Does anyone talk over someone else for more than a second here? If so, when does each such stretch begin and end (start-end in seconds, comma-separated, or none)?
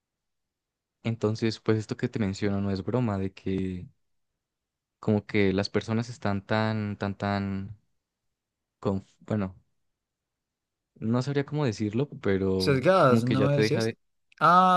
12.6-13.9